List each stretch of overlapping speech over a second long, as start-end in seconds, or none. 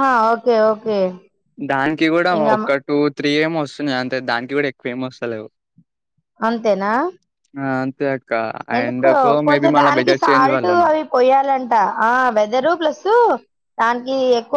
8.8-10.9